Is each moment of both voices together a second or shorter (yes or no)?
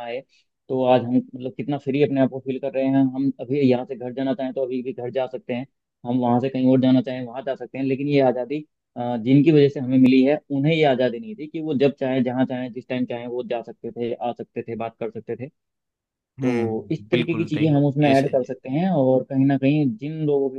no